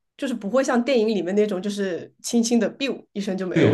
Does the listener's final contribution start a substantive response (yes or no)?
yes